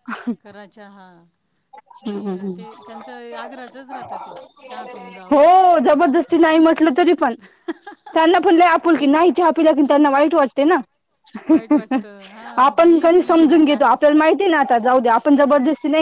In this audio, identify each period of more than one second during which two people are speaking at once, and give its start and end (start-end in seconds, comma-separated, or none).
12.6-14.2